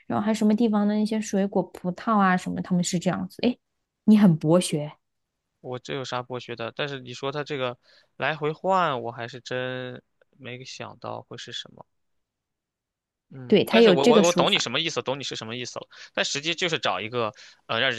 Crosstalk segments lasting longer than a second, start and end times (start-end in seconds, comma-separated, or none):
13.5-14.7